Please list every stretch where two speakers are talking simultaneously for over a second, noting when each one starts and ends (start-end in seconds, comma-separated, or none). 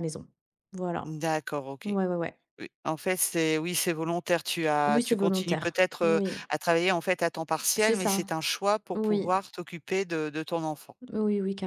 4.9-6.3